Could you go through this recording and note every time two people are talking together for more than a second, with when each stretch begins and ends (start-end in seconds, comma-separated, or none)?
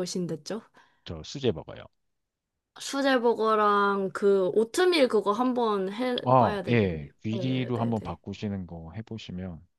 6.2-8.2